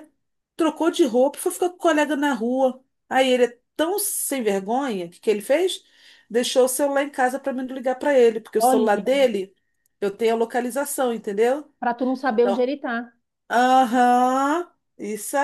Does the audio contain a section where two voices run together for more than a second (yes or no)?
no